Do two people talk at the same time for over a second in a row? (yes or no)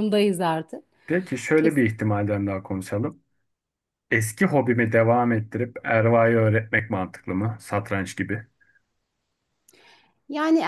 no